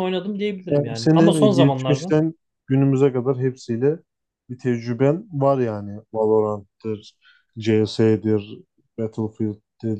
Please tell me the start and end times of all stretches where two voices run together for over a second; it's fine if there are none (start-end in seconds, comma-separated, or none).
0.7-2.1